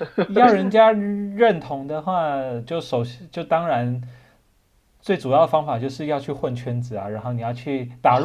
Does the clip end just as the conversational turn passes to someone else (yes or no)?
no